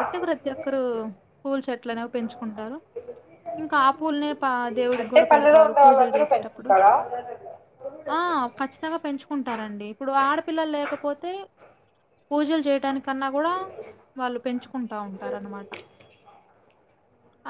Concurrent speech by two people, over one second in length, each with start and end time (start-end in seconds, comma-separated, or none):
5.0-6.7